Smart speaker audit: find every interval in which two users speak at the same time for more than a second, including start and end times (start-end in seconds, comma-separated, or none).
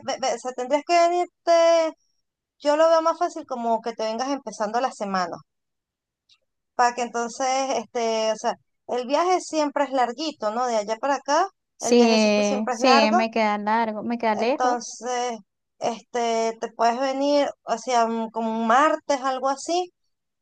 11.8-13.2